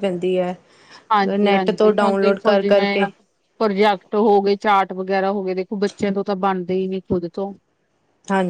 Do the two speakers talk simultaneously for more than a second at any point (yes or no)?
yes